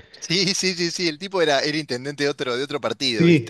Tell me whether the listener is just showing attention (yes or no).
no